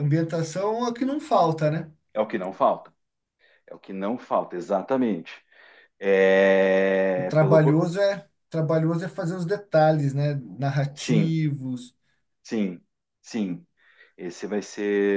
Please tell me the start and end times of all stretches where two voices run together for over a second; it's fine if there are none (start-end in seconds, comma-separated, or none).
none